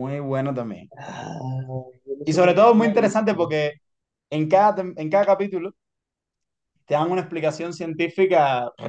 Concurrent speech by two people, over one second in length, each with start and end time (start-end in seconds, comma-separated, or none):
2.2-3.6